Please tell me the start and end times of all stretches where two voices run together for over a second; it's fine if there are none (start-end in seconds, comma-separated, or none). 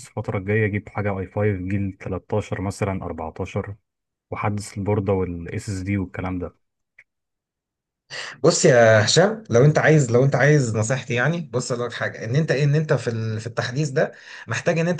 none